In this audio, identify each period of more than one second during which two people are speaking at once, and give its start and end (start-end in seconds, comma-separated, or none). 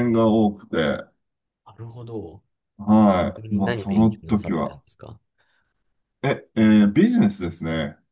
3.4-4.8